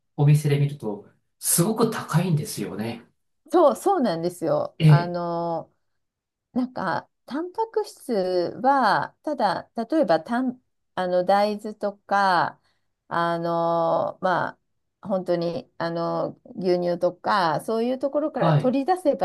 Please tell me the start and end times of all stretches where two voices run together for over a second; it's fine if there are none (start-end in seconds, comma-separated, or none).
none